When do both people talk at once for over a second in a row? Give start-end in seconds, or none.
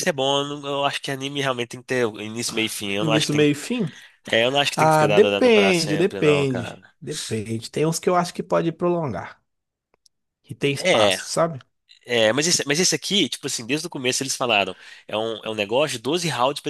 4.8-6.9